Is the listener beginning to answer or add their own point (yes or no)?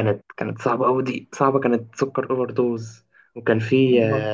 no